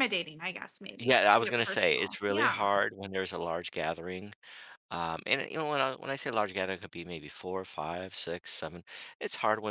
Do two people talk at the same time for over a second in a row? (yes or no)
yes